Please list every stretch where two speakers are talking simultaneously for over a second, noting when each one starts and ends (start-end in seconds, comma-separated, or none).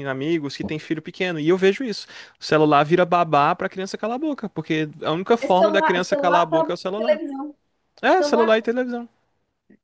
5.4-7.2